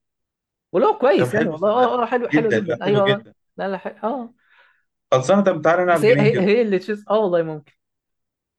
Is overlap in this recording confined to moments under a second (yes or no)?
no